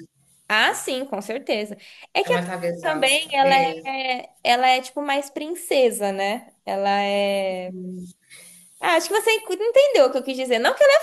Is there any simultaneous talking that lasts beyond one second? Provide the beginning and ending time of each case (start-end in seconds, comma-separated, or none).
2.2-3.9